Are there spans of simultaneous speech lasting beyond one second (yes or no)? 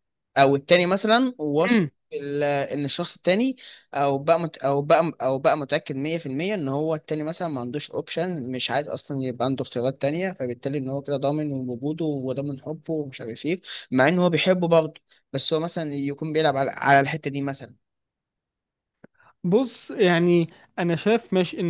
no